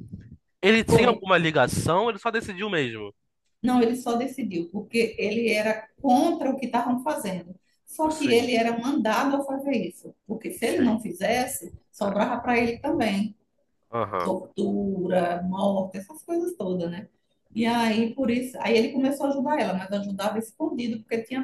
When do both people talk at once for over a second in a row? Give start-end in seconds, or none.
none